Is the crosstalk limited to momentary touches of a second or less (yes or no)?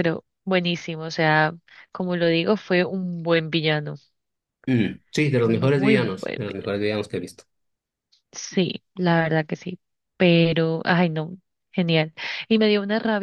no